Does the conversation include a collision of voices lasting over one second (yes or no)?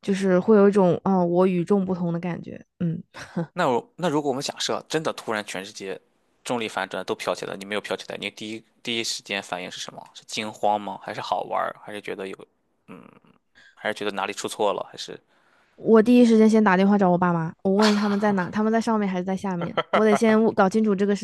no